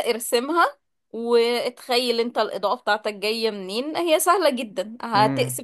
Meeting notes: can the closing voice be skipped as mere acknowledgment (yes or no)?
yes